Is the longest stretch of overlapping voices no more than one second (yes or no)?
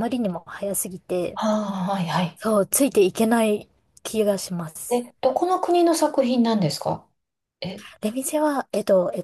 yes